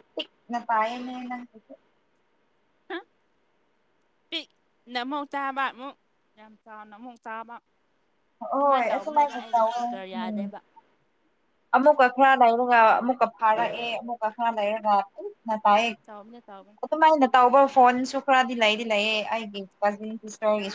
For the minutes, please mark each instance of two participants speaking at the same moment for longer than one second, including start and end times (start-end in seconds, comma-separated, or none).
8.6-10.4